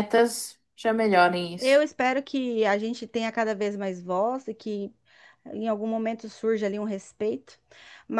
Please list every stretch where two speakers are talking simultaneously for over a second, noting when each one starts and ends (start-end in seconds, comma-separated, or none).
none